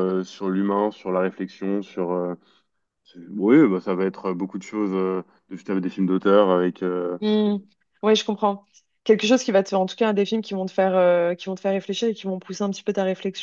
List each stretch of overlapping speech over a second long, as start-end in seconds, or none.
none